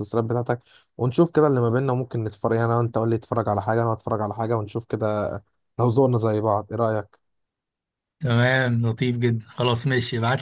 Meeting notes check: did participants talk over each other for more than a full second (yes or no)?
no